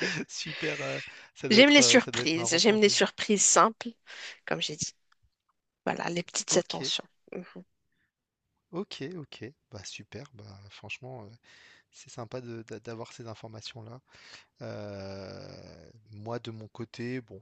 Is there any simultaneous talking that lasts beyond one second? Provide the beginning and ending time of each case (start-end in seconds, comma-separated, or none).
1.5-2.9